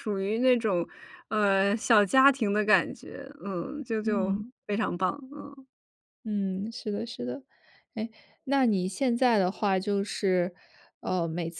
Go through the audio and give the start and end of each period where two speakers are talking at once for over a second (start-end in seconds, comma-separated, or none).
none